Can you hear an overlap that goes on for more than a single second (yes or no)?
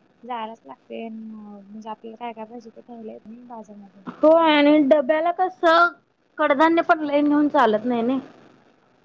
no